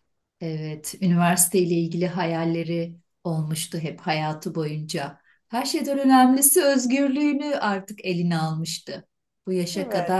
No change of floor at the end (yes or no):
yes